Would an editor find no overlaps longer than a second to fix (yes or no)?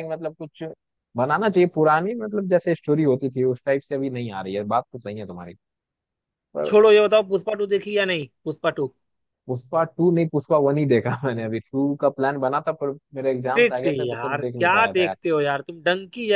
no